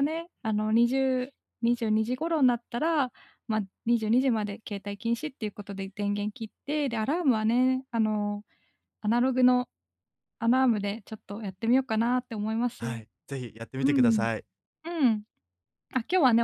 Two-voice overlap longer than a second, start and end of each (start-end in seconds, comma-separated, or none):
none